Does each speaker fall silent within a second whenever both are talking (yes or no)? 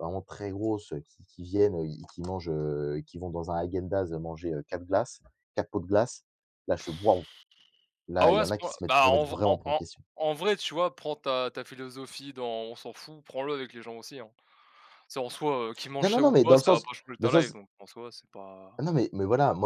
no